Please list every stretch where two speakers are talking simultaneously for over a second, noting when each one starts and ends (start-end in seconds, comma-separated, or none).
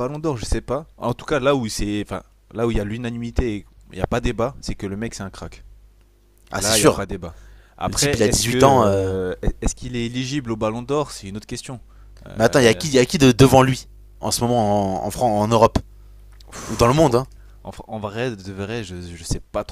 7.8-9.1